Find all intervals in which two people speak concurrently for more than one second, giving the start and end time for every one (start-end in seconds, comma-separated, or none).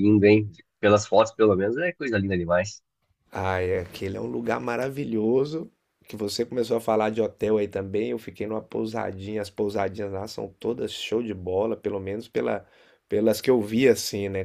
none